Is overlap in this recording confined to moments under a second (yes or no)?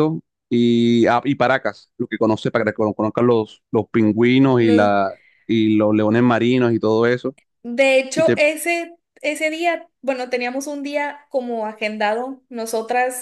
yes